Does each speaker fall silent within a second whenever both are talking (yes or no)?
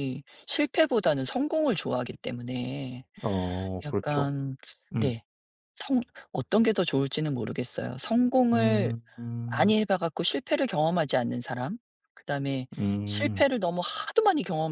yes